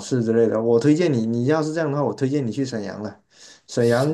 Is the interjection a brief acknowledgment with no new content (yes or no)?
yes